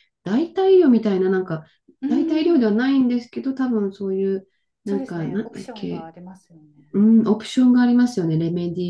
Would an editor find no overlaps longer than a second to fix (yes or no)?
no